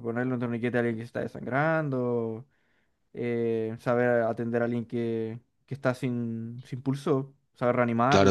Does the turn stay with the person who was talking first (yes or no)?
no